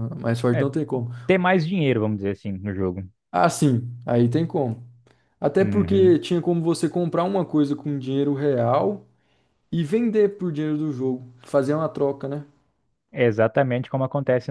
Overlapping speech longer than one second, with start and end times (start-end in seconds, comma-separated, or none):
none